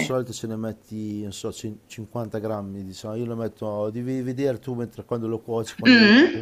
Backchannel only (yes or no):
no